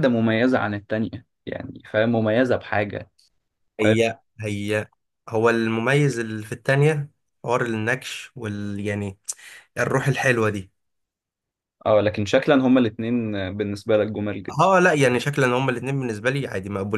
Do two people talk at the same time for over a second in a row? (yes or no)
no